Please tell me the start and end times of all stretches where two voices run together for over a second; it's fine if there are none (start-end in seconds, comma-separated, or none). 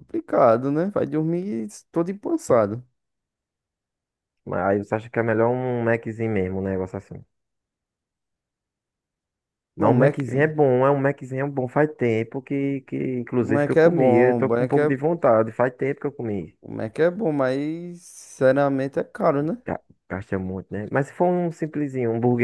13.4-14.9